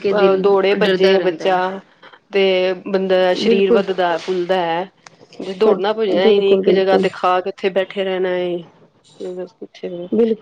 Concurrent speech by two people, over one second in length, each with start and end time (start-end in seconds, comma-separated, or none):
5.7-7.0